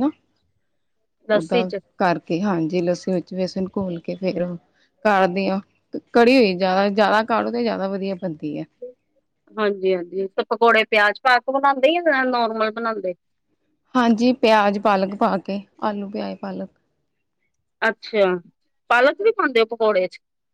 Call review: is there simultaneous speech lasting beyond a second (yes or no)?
no